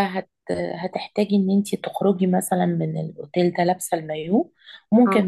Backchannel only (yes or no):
yes